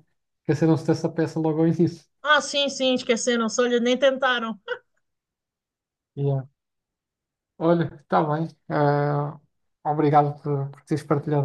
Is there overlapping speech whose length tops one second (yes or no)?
no